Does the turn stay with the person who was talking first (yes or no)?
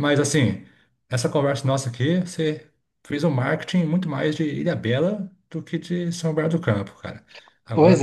yes